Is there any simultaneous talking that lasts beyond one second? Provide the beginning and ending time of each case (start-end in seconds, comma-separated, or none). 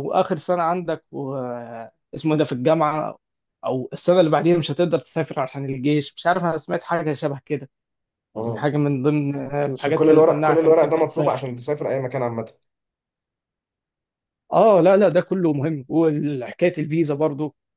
9.8-11.5